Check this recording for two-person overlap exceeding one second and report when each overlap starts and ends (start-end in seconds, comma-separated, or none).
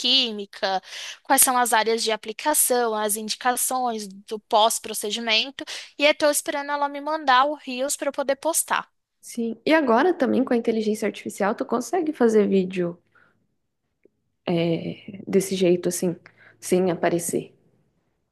none